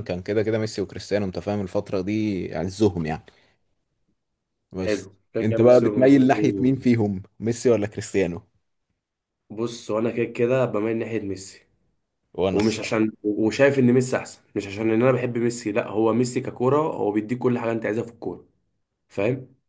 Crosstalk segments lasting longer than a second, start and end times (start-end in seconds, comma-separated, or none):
4.8-6.7